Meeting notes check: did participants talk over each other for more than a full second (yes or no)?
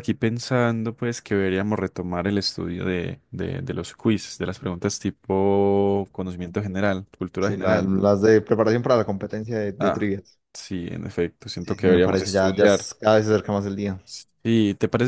yes